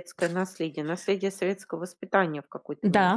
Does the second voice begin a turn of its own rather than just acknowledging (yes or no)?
yes